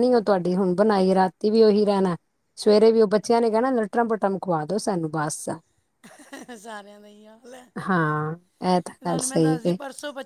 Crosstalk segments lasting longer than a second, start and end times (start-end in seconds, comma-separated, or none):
none